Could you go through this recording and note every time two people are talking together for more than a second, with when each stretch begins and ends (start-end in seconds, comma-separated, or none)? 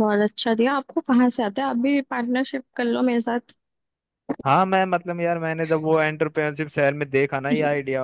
none